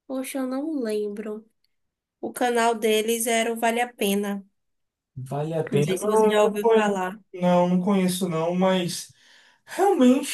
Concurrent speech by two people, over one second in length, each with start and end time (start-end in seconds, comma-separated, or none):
5.7-7.2